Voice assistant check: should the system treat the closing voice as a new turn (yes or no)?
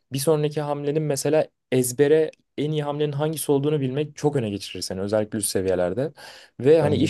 no